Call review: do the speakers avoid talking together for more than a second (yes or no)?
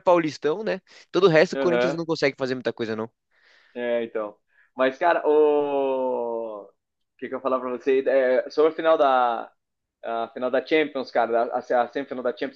yes